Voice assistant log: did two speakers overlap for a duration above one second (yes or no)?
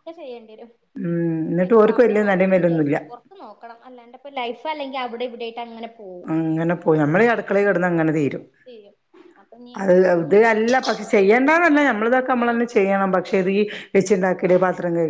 yes